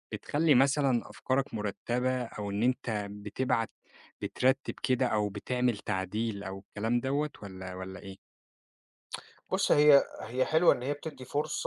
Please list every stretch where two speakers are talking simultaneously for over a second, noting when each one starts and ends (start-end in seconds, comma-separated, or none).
none